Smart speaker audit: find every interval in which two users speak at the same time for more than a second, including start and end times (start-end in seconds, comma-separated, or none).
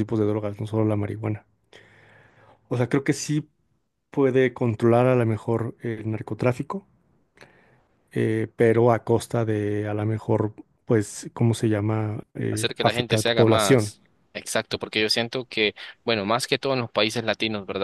12.5-13.9